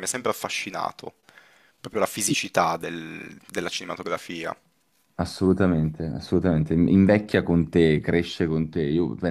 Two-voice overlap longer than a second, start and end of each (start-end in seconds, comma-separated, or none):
none